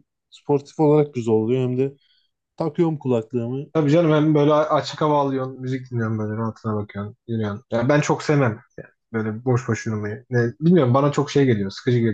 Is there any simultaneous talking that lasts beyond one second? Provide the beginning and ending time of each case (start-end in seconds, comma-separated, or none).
none